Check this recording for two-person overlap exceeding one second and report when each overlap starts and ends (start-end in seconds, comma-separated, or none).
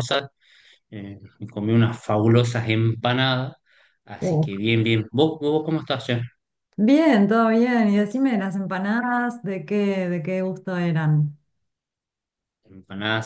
none